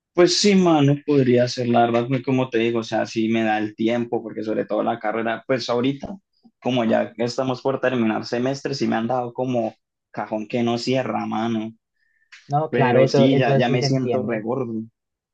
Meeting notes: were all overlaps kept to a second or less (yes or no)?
no